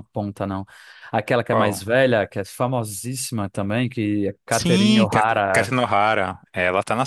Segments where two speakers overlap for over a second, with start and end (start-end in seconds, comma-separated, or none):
4.5-5.7